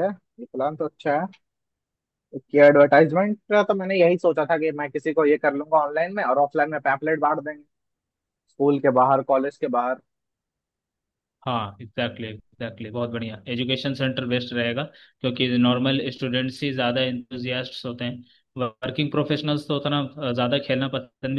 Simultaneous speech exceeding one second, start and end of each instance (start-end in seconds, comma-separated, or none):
none